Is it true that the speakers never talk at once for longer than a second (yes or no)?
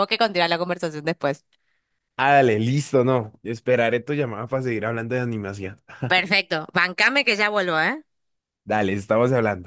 yes